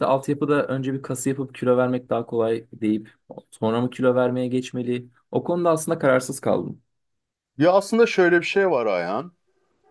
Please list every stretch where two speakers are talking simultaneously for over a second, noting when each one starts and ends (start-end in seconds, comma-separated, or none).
none